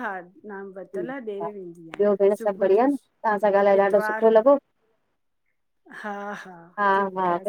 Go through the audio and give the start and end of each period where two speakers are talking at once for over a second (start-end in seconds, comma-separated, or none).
0.8-2.9